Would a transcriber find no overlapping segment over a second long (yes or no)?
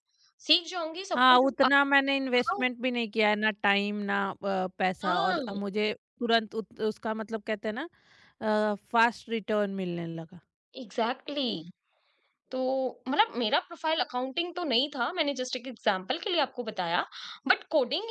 yes